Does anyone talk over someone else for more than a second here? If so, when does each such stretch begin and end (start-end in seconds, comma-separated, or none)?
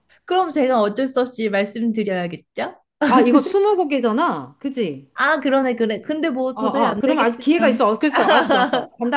6.5-7.8